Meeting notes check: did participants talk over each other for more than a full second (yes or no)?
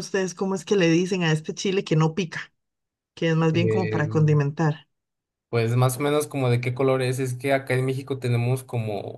no